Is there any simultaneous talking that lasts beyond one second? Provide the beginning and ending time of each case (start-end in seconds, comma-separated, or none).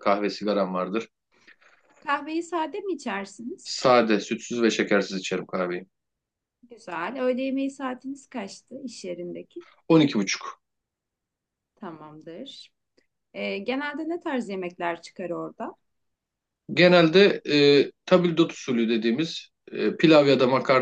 none